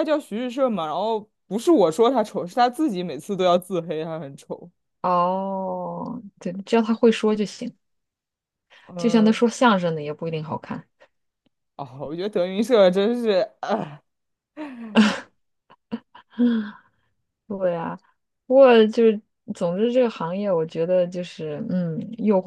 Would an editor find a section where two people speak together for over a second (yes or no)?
no